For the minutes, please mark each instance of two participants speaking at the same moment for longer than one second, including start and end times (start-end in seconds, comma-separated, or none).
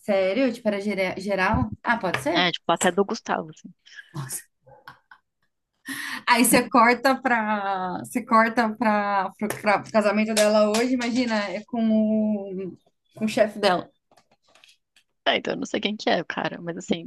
none